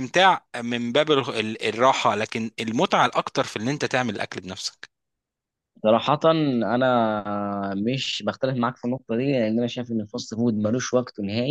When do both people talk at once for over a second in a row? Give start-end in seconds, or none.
none